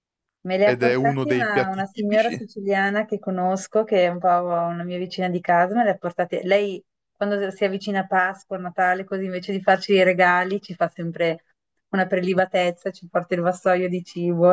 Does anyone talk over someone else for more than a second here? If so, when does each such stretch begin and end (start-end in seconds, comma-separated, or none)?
0.6-2.4